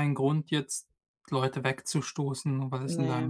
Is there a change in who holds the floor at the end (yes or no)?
no